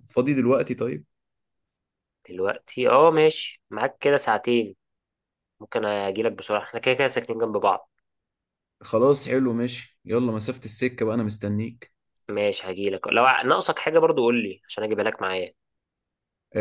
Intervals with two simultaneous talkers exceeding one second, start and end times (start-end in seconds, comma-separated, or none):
none